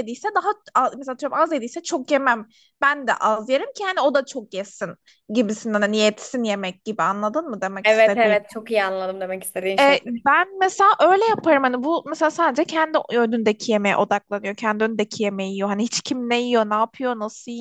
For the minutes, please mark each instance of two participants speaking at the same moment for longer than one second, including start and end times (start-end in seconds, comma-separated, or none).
none